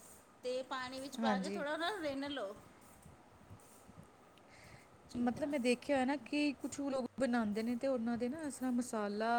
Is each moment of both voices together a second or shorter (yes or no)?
yes